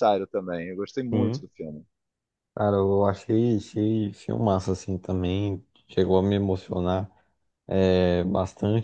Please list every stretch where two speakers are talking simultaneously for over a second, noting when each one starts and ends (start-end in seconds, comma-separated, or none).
none